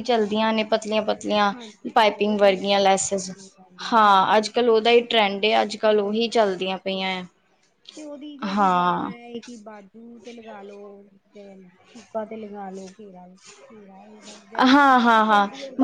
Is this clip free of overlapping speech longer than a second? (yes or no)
no